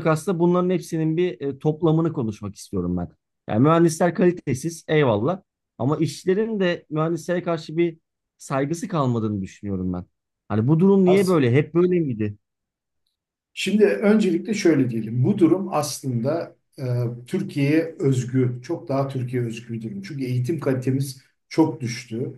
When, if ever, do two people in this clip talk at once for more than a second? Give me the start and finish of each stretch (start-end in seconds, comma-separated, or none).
none